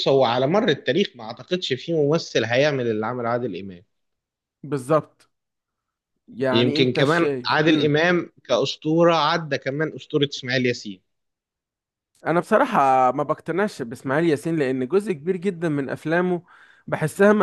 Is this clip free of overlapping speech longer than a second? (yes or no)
no